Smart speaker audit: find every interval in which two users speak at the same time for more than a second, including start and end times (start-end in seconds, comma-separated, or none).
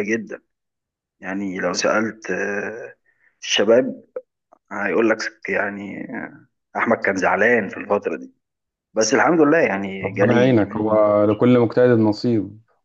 10.0-11.4